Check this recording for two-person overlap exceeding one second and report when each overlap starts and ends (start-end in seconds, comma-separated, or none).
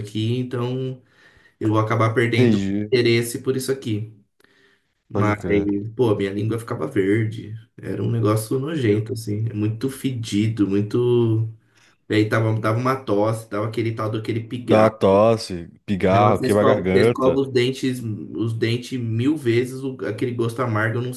16.0-17.4